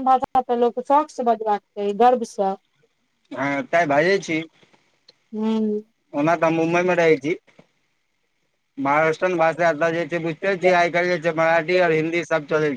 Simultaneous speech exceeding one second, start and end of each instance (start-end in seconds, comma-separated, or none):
none